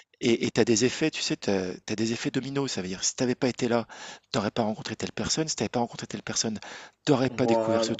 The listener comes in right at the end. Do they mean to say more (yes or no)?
no